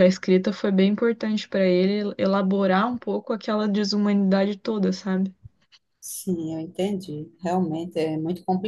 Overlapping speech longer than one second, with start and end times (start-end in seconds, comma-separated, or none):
none